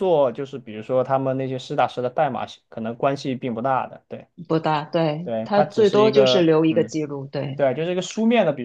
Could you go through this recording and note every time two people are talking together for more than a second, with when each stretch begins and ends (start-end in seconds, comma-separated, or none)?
5.2-6.9